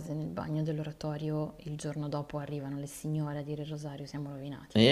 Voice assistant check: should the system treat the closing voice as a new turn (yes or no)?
yes